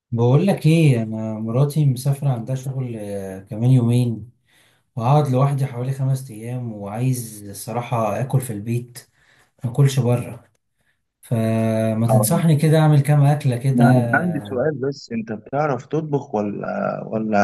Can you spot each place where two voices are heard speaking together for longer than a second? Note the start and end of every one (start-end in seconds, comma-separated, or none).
none